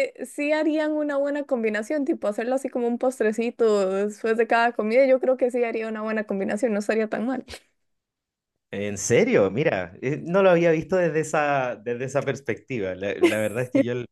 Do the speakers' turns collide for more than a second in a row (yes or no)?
no